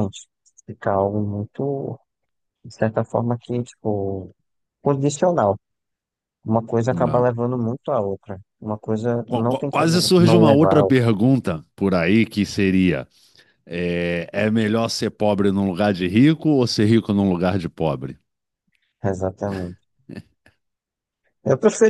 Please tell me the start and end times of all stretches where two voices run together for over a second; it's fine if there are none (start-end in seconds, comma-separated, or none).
9.2-11.1